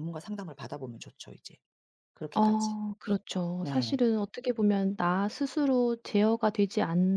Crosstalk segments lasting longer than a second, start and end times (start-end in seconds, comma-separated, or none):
none